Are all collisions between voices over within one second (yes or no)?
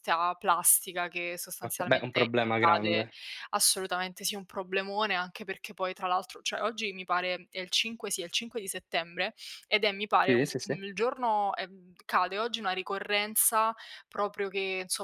no